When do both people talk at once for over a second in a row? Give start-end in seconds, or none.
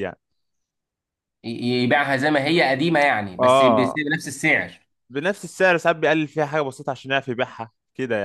none